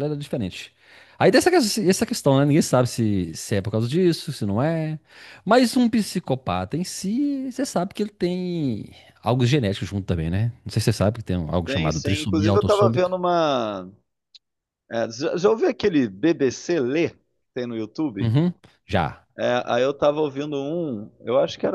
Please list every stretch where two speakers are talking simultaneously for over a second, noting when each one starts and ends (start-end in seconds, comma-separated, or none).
11.7-13.1